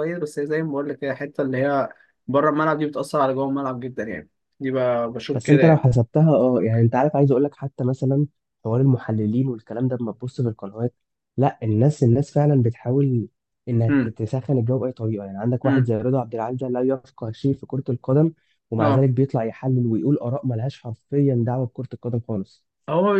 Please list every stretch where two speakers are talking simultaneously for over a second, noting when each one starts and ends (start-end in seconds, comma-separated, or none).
none